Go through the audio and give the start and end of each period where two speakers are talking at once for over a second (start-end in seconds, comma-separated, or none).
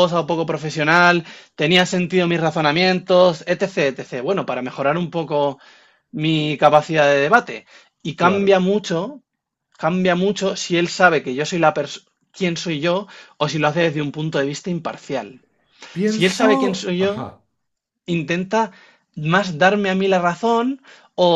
16.0-17.3